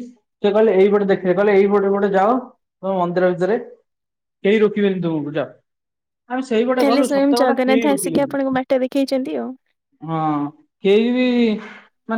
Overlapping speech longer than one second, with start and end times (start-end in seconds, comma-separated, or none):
6.8-8.4